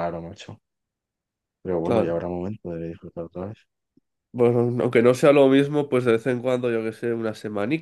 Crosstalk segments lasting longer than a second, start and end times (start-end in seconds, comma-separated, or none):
none